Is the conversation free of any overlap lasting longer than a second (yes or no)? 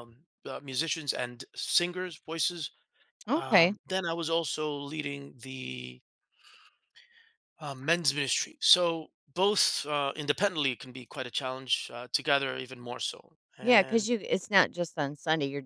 yes